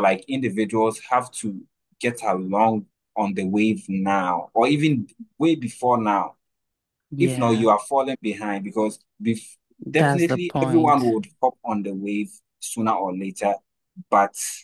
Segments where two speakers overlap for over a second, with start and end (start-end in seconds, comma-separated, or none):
9.8-11.1